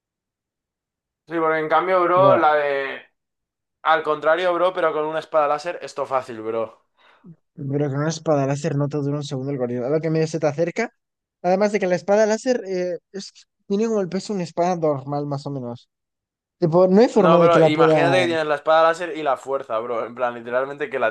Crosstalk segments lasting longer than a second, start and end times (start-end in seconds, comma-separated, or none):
17.1-18.5